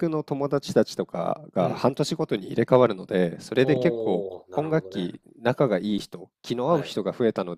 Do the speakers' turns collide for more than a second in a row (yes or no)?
yes